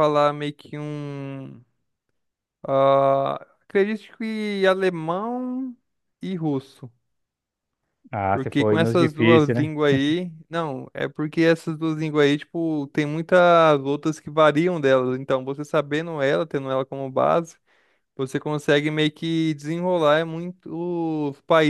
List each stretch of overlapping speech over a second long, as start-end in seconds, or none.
8.3-9.7